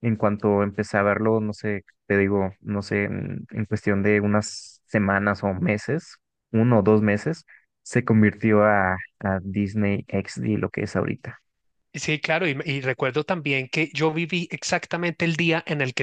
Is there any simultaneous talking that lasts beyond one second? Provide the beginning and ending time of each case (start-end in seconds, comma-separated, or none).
none